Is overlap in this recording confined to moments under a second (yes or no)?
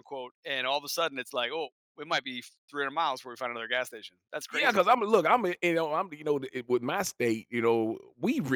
yes